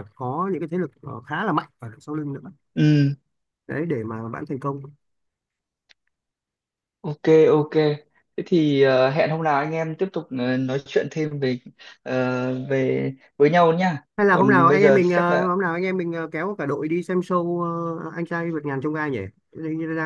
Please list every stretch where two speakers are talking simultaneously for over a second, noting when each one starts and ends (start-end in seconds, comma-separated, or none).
14.2-15.5